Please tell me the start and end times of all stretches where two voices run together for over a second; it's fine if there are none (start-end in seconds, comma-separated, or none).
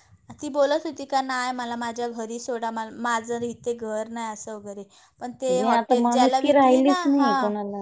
5.5-7.3